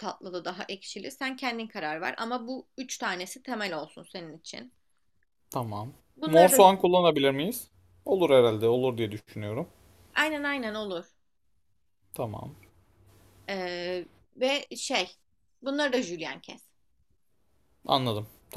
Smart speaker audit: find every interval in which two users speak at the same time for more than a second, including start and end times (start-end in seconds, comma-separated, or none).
none